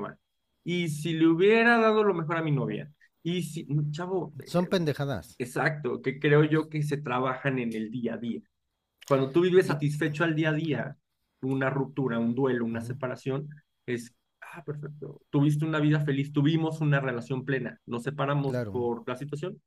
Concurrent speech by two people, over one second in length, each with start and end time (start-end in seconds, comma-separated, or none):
none